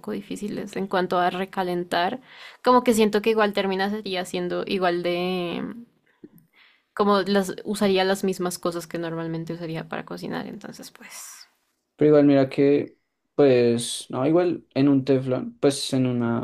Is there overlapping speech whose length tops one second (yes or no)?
no